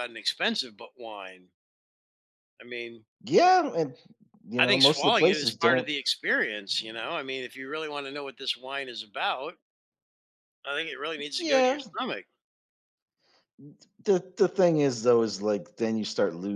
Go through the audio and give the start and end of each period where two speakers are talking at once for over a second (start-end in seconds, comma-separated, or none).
4.6-5.9